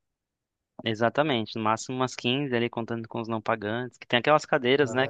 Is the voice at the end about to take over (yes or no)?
no